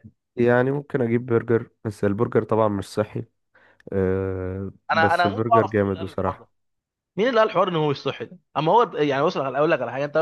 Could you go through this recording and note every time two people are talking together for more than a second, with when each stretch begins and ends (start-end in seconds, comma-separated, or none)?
4.9-6.5